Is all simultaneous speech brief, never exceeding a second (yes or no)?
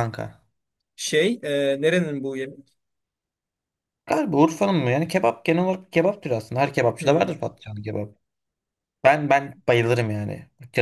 yes